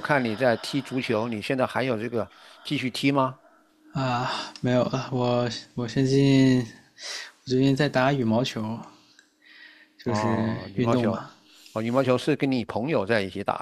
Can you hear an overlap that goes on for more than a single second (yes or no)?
yes